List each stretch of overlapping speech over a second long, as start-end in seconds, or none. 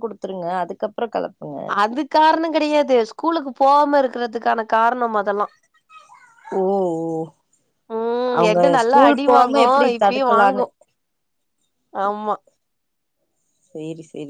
8.4-10.6